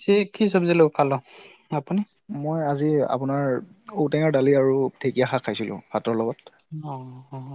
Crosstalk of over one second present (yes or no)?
no